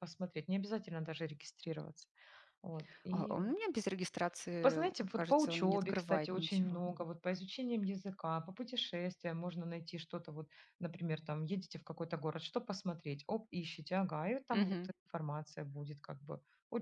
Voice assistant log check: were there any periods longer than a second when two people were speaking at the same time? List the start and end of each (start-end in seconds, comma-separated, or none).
4.6-6.8